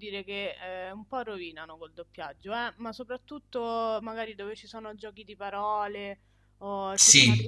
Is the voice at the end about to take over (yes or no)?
no